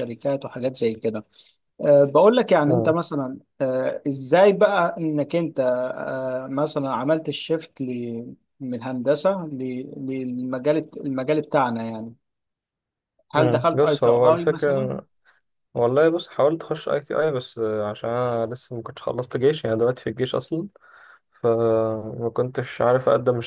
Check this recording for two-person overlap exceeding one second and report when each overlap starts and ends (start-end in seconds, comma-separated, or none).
13.4-14.9